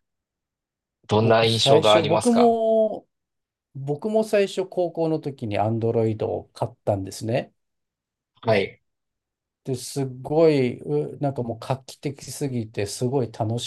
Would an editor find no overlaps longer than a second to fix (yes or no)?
no